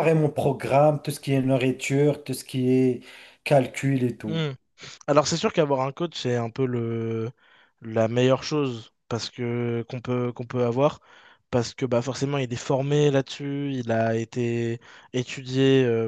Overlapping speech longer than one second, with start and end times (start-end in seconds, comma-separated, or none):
none